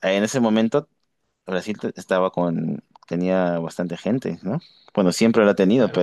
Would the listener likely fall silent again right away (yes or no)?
no